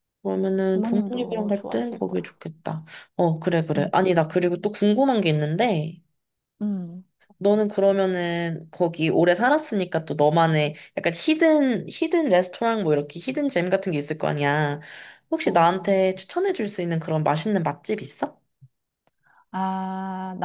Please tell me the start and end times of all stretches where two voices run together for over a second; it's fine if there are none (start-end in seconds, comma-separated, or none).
0.7-2.3